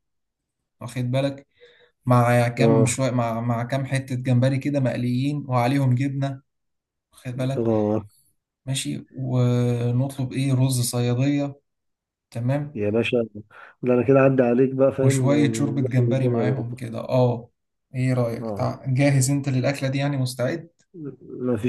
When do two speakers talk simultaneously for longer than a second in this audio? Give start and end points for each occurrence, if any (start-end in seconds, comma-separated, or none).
14.9-16.8